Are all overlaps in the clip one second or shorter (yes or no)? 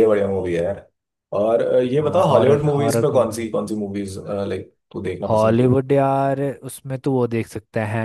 no